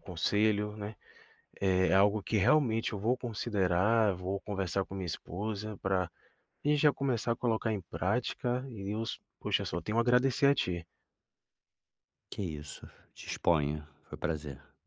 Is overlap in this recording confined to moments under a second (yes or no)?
yes